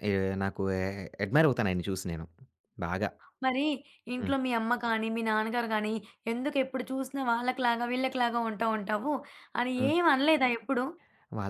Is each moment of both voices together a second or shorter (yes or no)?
yes